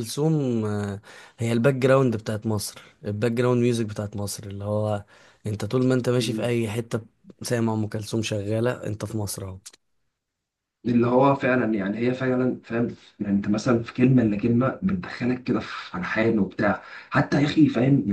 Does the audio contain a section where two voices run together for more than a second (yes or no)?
no